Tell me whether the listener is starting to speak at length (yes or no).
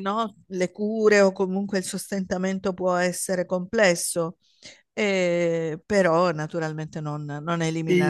yes